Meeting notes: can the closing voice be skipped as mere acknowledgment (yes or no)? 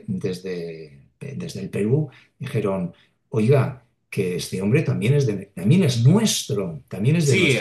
no